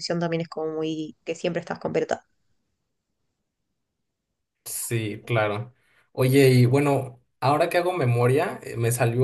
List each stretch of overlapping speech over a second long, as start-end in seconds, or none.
none